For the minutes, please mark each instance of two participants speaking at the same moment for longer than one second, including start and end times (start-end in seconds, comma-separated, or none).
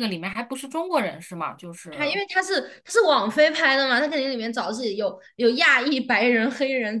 none